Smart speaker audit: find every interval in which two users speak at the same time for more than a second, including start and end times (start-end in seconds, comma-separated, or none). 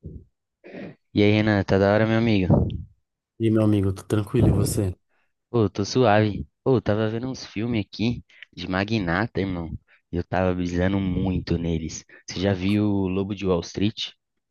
none